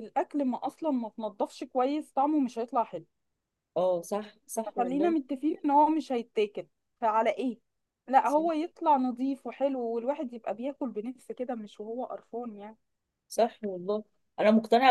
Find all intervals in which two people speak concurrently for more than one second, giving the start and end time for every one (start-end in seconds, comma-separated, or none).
none